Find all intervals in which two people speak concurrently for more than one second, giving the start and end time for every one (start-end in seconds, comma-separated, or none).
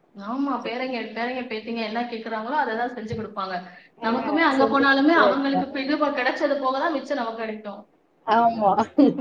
4.1-5.8